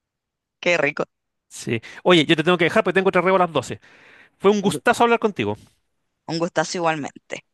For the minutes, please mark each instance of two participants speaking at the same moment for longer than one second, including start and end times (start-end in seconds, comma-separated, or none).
none